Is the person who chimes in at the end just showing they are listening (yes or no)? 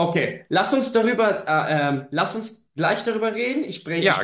yes